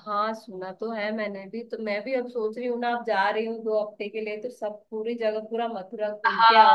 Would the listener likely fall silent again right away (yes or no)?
no